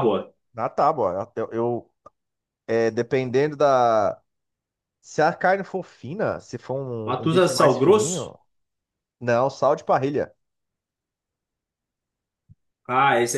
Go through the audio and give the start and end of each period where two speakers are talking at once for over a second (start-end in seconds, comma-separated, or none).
7.0-8.3